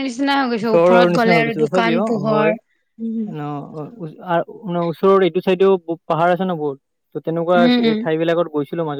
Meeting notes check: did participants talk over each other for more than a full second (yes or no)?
yes